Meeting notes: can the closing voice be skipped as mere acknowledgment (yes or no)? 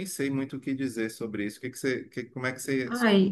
no